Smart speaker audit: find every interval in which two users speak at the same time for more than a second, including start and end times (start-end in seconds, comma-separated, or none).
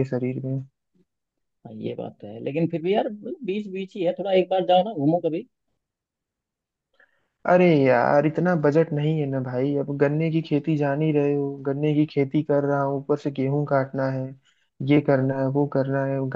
none